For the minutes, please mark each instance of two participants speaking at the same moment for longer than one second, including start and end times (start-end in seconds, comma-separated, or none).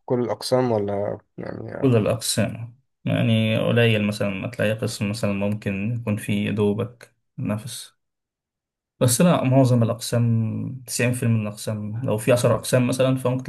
none